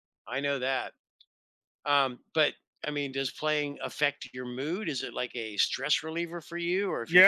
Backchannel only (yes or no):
no